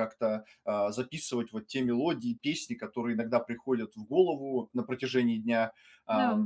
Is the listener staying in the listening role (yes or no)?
yes